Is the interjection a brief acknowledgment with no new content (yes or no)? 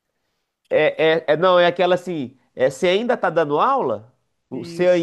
yes